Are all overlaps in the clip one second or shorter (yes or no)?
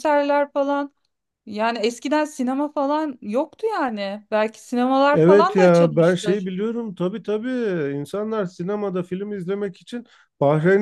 no